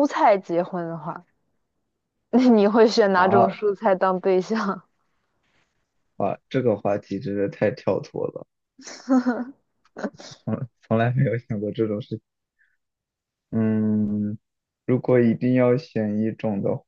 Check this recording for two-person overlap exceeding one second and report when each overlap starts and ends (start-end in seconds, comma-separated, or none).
none